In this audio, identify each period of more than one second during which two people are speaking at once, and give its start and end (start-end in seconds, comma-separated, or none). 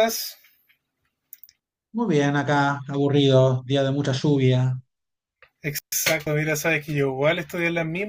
none